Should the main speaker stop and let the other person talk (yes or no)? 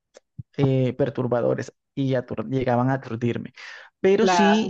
no